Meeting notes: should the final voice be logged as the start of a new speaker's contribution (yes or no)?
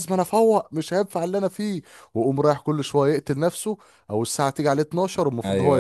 yes